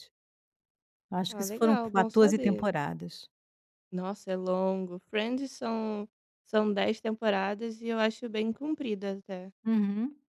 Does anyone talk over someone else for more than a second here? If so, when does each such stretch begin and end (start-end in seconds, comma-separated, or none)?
1.3-2.8